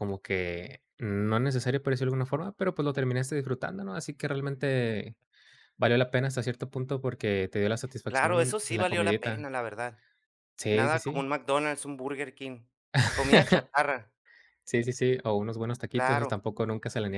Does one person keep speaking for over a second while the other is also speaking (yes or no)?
yes